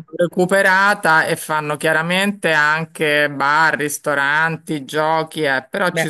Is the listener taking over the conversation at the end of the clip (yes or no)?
no